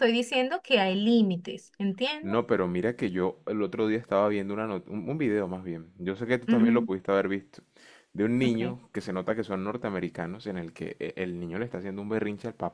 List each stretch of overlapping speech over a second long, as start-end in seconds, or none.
none